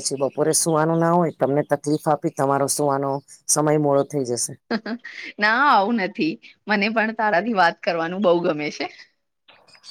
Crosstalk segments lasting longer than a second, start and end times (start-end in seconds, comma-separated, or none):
none